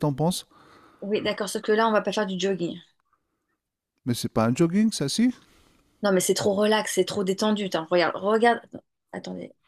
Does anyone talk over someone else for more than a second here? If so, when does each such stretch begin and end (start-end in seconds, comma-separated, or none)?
none